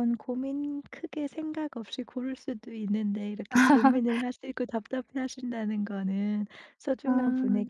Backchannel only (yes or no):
yes